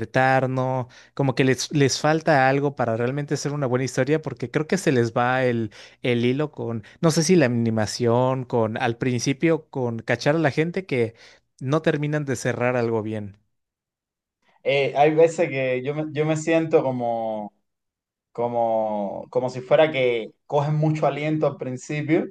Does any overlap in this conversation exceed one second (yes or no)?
no